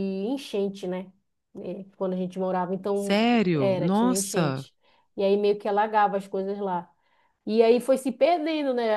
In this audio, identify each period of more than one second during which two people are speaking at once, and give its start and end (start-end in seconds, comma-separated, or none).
2.9-4.6